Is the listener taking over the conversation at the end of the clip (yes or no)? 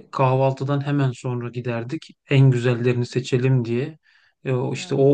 no